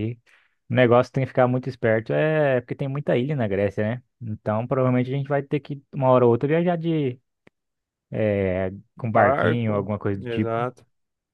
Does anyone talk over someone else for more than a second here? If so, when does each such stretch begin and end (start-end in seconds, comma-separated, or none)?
9.0-10.7